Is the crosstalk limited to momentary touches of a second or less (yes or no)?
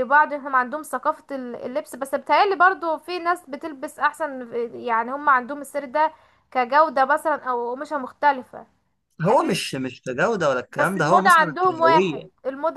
no